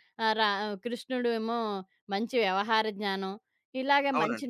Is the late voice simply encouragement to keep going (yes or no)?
yes